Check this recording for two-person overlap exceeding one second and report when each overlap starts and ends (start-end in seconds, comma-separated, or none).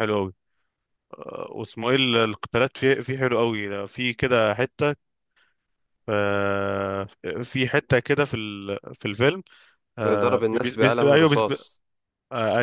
10.1-11.4